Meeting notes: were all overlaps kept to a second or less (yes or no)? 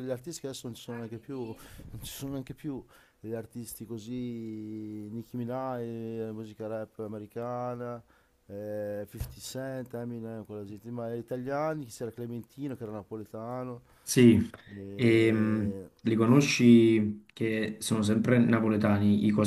yes